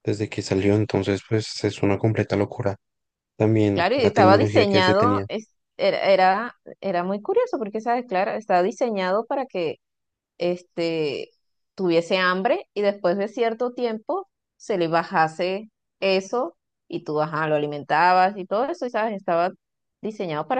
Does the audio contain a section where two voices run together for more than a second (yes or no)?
yes